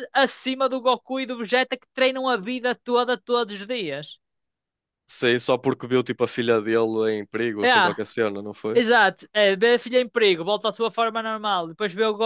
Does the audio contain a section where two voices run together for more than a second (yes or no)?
no